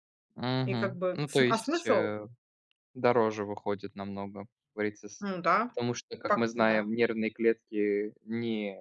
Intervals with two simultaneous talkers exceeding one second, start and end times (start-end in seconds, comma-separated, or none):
0.6-2.1